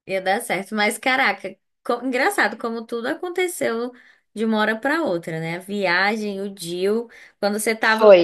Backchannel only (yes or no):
yes